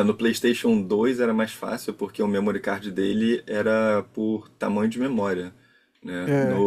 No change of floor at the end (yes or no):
yes